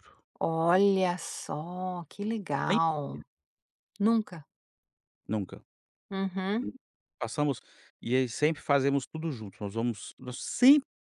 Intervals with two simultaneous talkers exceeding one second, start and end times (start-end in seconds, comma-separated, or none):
none